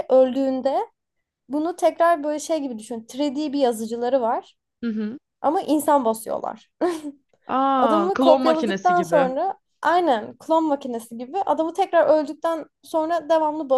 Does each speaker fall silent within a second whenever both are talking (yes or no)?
no